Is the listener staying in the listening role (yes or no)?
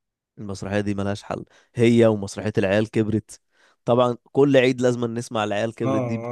no